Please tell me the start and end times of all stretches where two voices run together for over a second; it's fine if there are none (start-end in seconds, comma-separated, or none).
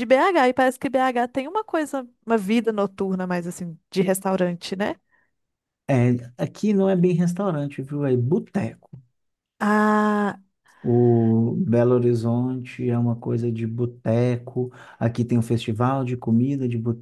none